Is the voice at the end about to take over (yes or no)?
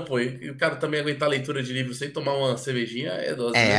yes